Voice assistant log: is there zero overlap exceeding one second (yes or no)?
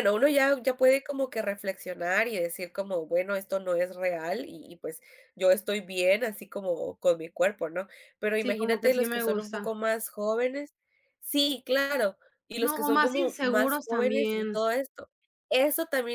no